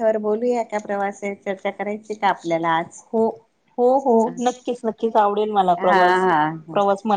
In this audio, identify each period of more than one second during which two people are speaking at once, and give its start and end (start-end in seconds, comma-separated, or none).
none